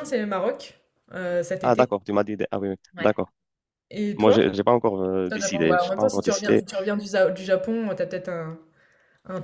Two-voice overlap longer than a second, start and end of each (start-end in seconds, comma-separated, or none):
5.3-6.6